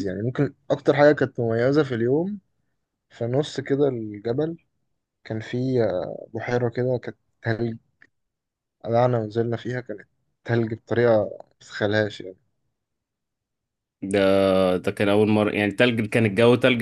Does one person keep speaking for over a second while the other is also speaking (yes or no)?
no